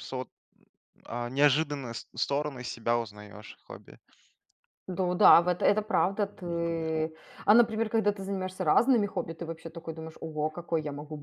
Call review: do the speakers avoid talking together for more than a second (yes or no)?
yes